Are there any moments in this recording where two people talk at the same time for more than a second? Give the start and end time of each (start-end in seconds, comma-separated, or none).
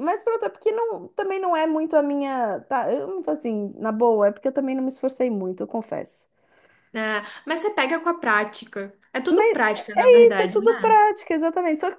9.3-11.0